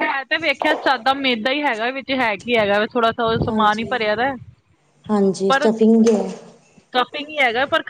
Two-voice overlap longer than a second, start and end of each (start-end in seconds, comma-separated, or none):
none